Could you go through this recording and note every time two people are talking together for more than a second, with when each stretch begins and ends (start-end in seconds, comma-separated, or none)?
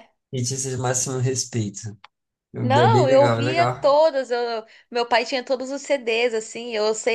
2.6-4.0